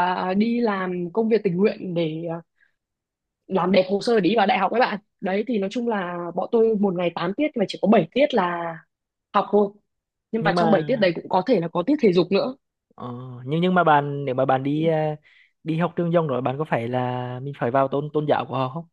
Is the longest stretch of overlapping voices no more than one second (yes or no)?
yes